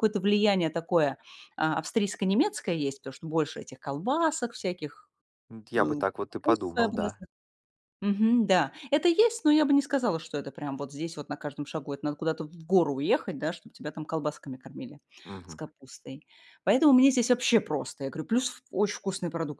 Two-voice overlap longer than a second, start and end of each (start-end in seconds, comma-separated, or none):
5.8-7.2